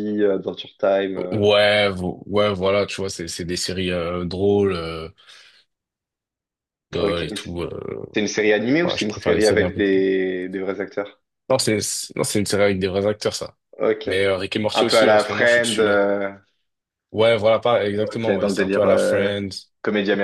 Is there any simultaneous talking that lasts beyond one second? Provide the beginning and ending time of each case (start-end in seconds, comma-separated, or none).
8.8-10.0, 14.7-16.1, 18.0-19.3